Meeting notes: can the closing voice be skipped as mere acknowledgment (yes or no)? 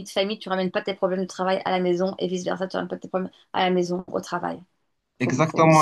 no